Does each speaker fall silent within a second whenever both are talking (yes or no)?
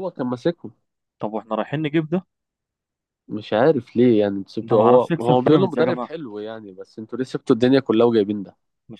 no